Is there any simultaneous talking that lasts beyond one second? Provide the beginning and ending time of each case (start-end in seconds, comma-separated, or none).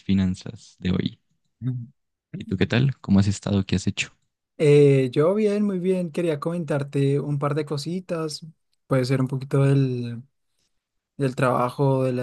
none